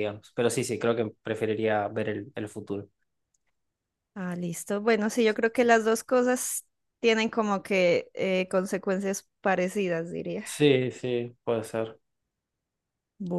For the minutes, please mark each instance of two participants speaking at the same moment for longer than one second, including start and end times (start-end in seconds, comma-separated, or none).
none